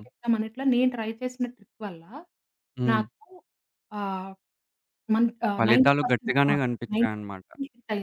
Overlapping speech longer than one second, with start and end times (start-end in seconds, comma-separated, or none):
5.6-7.5